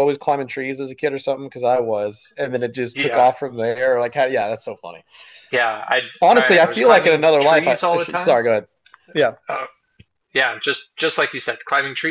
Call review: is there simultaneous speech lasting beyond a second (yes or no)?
yes